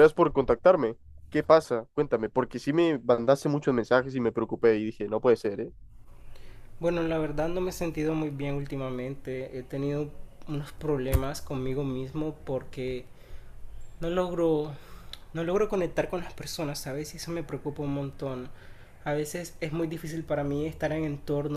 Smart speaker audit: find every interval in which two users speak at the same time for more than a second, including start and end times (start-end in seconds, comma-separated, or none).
none